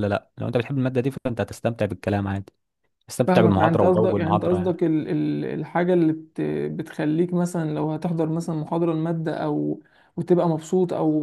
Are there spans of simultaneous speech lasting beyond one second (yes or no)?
yes